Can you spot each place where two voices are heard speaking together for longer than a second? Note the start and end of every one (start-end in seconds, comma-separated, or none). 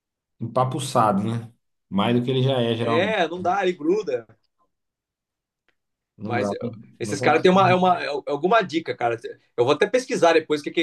6.2-7.8